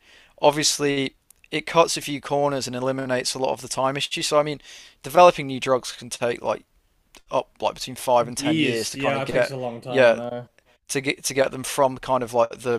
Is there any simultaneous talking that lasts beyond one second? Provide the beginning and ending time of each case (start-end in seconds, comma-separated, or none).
8.3-10.2